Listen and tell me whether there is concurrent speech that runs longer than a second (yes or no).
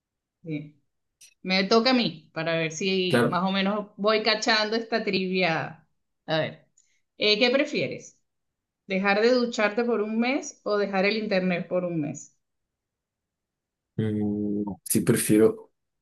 no